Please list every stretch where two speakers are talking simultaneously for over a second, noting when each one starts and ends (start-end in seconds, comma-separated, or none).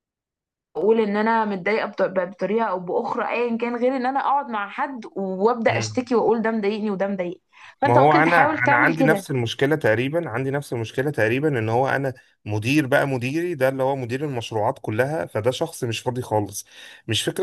7.8-9.3